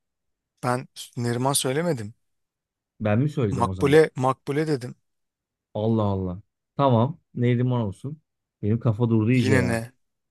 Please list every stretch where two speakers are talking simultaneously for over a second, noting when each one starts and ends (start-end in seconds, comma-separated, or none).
none